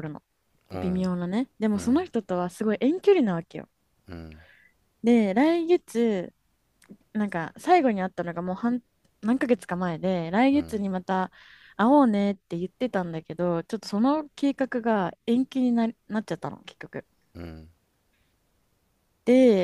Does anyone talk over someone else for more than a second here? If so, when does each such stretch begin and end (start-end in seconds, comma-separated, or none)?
none